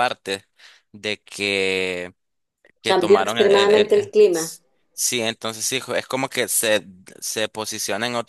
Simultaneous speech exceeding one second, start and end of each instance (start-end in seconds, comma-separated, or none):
2.9-4.1